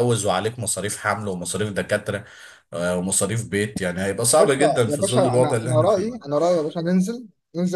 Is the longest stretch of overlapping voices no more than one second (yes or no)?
no